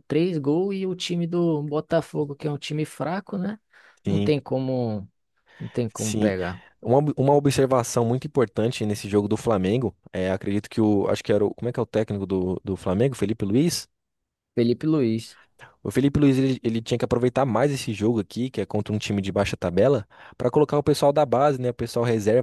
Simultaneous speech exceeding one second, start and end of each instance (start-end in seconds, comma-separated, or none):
none